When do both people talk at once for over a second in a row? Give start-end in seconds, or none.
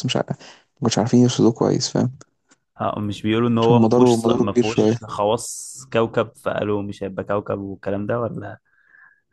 3.6-5.0